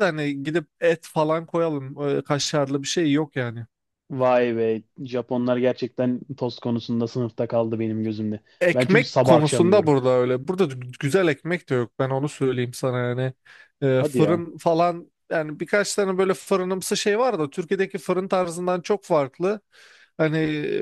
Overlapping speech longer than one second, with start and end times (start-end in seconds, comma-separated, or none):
8.6-10.0